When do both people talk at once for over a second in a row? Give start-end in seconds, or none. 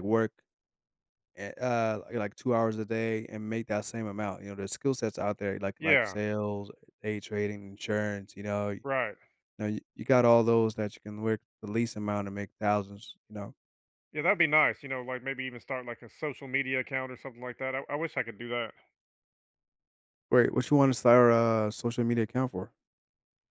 none